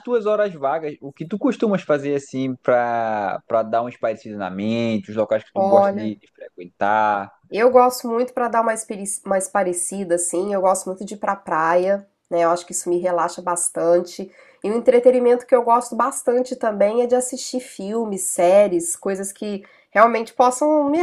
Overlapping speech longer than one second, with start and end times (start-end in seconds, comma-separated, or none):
none